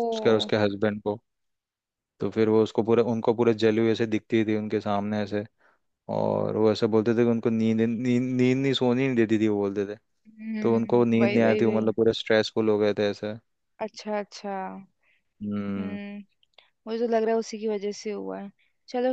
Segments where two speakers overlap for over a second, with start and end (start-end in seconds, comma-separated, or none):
10.6-11.9